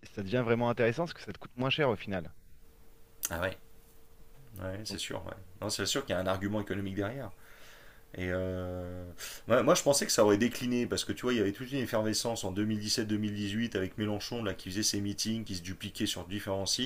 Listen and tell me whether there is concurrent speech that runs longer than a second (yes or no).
no